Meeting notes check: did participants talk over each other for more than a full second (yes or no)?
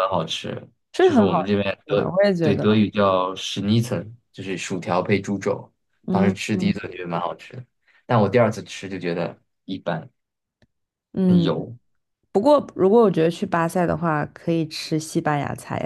yes